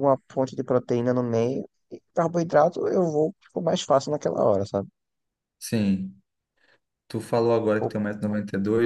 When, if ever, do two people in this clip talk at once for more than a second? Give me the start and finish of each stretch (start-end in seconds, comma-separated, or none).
none